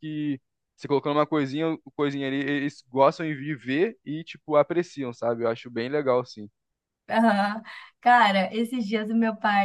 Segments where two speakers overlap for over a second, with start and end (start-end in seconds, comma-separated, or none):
none